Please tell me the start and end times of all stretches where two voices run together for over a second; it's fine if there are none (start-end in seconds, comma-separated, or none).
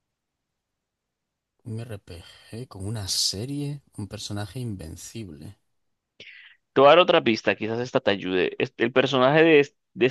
none